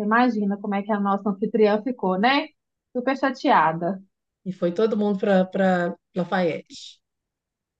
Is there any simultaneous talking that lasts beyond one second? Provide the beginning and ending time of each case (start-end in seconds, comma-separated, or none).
none